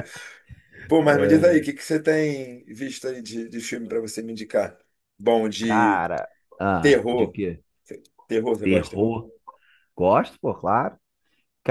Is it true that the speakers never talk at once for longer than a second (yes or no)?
yes